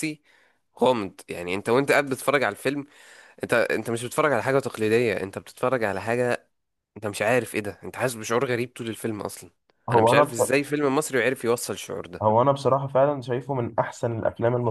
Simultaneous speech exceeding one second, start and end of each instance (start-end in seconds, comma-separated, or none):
none